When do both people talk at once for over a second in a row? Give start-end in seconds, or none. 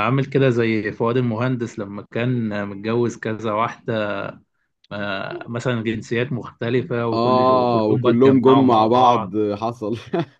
7.1-9.3